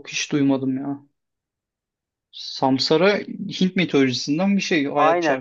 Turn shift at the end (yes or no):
yes